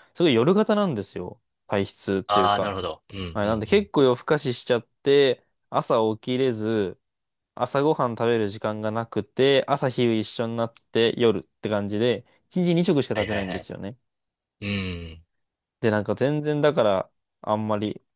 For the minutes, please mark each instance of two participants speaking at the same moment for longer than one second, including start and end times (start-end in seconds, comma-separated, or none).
none